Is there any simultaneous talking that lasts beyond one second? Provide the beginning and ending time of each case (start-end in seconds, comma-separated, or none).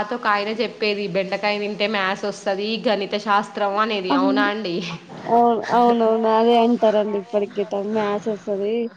none